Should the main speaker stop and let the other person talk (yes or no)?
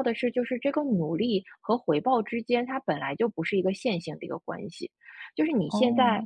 no